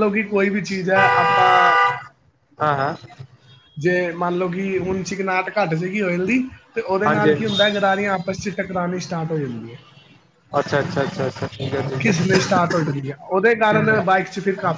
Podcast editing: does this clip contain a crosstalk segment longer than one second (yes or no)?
no